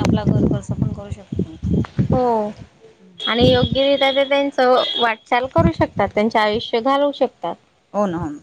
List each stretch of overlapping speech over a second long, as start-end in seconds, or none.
none